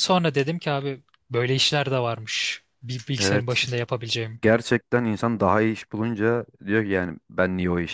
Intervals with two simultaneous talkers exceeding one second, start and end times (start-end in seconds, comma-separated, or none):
none